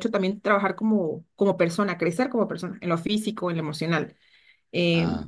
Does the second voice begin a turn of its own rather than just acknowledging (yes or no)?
no